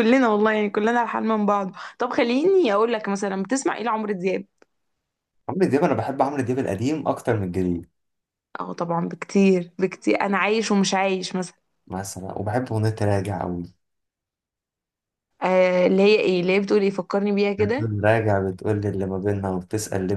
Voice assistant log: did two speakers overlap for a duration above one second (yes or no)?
no